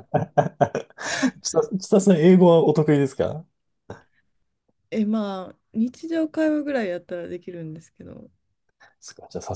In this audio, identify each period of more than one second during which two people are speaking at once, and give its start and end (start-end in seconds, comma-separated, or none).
none